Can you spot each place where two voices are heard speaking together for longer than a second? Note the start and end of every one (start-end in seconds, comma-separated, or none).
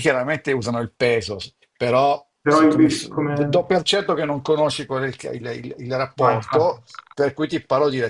2.4-3.7